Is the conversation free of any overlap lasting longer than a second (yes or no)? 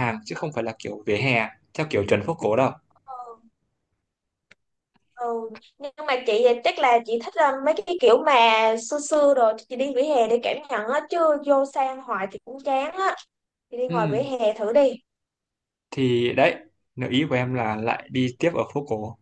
yes